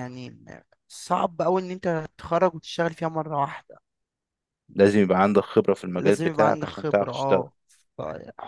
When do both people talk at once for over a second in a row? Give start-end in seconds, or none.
6.0-7.4